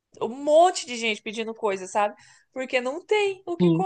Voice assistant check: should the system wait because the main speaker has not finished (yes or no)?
yes